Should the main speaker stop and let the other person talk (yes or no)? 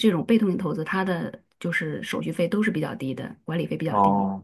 yes